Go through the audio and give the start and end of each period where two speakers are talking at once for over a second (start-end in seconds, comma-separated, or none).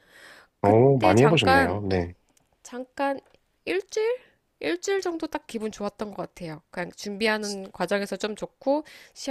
0.6-1.8